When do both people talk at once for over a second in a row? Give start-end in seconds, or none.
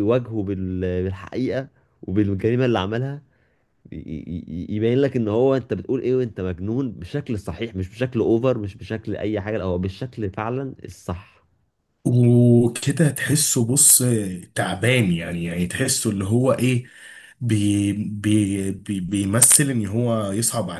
none